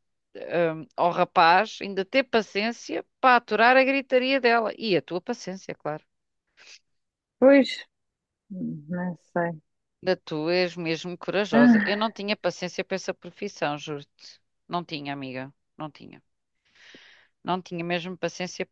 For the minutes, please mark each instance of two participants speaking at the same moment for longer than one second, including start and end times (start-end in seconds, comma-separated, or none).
none